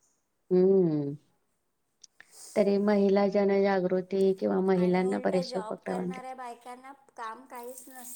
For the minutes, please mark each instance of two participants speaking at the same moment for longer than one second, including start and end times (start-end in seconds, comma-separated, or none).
4.8-6.2